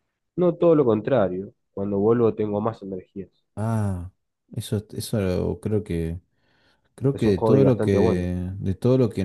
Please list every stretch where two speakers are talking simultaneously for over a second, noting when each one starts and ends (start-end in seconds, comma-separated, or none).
7.1-8.3